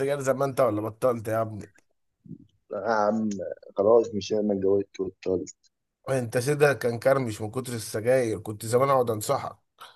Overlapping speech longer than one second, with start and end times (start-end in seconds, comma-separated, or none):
none